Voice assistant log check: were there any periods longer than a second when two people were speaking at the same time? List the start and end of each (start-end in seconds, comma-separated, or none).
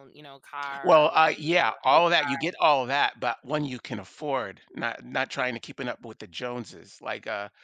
0.8-2.5